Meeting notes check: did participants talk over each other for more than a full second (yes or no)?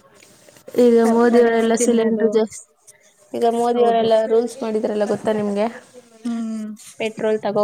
yes